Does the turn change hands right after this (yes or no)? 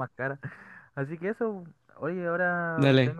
no